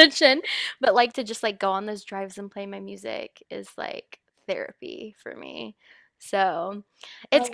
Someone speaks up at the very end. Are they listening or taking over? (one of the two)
listening